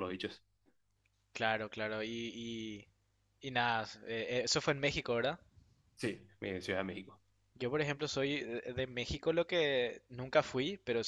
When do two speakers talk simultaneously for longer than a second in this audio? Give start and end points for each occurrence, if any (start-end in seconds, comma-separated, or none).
none